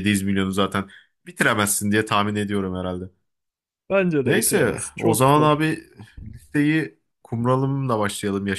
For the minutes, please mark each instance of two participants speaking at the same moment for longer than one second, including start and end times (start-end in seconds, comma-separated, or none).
4.2-5.6